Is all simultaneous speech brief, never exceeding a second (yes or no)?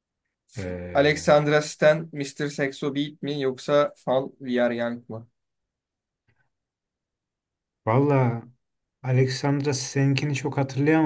yes